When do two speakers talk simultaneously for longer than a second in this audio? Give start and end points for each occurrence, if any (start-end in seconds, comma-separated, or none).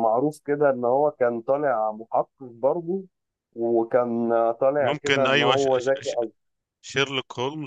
4.8-6.2